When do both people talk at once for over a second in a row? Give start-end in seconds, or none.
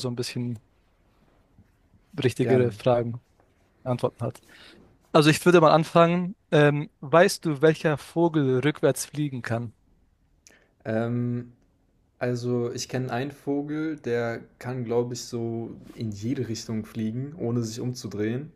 none